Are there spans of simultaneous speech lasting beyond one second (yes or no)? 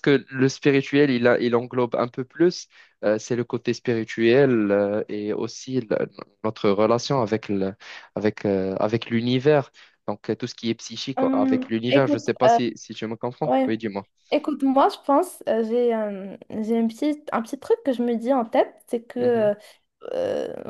yes